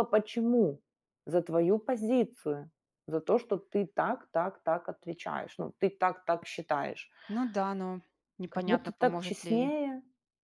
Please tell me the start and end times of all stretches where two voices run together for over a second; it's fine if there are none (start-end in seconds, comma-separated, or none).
8.5-9.7